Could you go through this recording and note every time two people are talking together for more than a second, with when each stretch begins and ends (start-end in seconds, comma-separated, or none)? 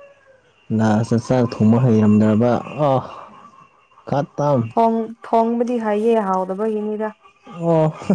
none